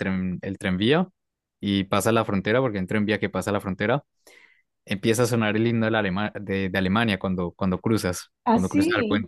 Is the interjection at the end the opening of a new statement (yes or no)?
no